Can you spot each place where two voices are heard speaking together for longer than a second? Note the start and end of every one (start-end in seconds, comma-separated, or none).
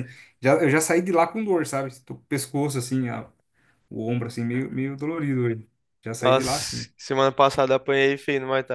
none